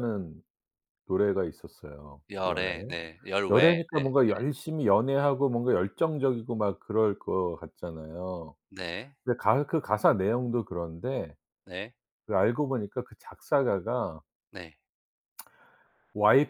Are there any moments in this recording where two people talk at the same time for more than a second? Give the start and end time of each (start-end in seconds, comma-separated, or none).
none